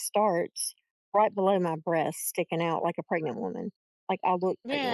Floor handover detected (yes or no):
yes